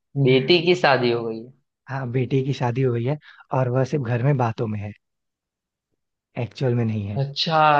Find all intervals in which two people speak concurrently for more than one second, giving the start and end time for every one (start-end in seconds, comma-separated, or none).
none